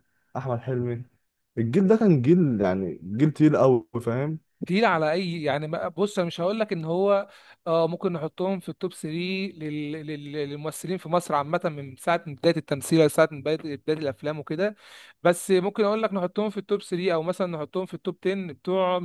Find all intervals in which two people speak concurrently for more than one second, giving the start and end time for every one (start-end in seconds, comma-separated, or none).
none